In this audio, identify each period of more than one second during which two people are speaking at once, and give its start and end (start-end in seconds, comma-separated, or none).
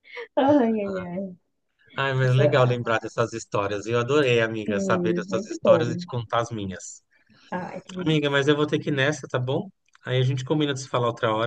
4.6-6.0